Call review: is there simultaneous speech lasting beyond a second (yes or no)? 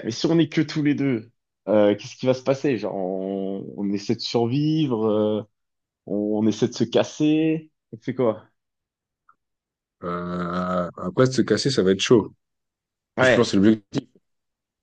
no